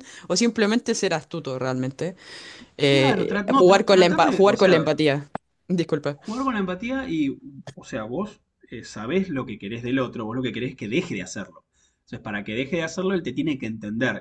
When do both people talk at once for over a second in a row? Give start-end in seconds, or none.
2.9-4.9